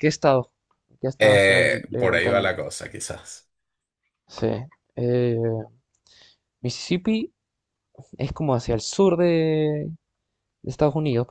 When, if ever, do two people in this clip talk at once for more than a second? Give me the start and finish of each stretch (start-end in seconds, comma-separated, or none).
1.2-2.6